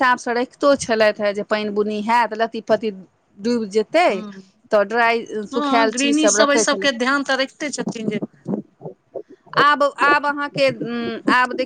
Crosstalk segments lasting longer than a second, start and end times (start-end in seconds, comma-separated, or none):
5.5-6.9